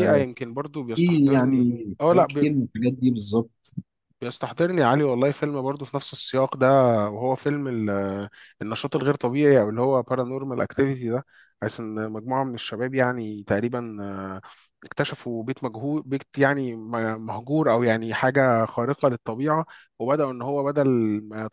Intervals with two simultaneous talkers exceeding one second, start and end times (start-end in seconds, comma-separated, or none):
0.9-2.5